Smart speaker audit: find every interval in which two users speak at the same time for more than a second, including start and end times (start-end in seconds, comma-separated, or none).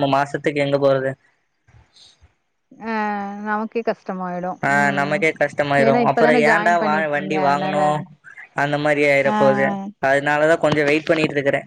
6.1-7.8